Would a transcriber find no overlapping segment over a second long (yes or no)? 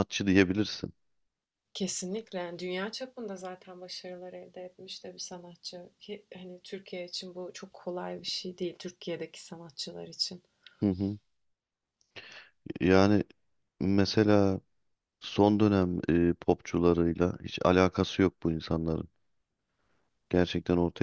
yes